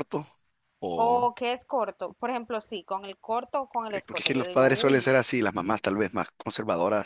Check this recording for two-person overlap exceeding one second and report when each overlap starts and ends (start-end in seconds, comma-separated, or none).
3.9-5.2